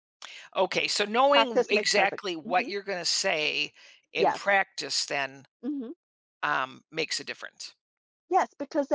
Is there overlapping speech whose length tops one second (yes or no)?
yes